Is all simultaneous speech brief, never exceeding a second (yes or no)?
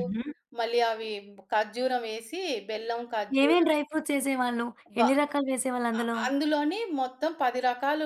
yes